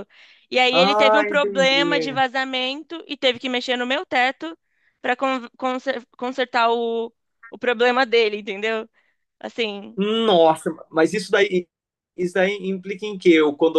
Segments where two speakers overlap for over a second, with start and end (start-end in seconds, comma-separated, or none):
0.7-2.2